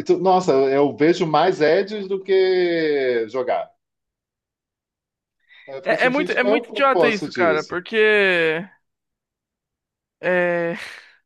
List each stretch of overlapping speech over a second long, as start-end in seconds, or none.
5.8-7.8